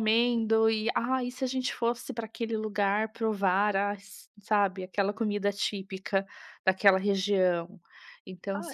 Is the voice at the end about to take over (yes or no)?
no